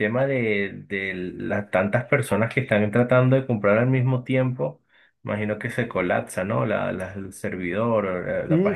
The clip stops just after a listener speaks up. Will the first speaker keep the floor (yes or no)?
no